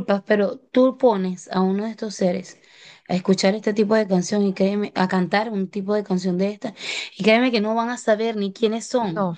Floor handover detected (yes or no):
no